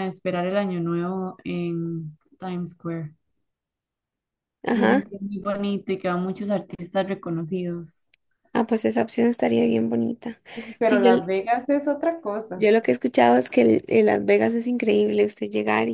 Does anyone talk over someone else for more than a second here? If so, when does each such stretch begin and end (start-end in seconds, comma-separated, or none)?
none